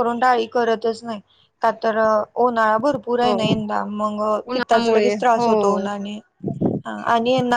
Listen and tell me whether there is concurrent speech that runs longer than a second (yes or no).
yes